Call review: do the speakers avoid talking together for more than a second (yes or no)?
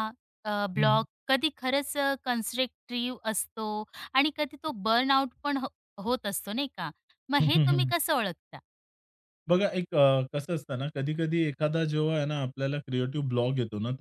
yes